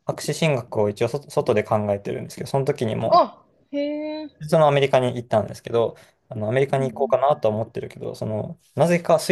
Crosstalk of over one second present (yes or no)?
no